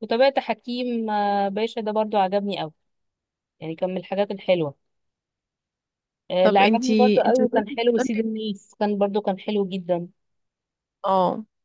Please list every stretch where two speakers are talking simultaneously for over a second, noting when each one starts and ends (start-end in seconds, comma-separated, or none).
6.4-8.3